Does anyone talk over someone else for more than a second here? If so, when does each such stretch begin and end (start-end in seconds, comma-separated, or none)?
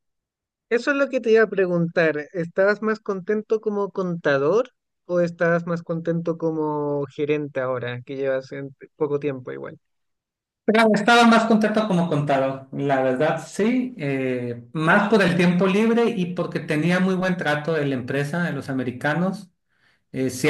none